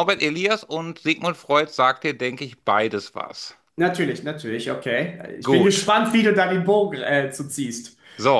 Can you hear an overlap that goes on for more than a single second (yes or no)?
no